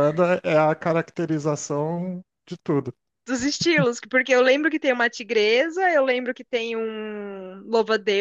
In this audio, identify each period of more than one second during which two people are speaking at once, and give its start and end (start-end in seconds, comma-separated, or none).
none